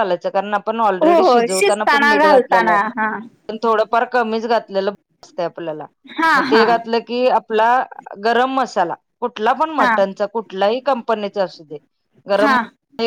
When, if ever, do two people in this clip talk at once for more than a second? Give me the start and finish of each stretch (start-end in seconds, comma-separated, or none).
1.0-2.8